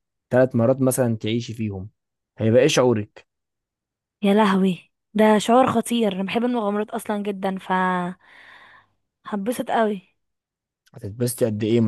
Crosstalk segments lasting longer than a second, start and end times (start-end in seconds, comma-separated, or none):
none